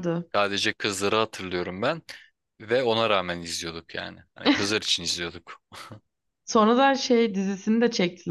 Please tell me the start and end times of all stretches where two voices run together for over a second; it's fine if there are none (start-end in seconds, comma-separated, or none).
none